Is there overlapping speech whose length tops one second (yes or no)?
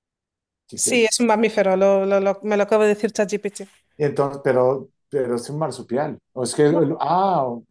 no